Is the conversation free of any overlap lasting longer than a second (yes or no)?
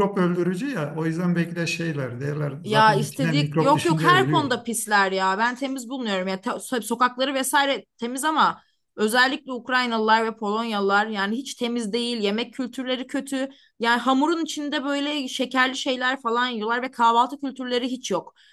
no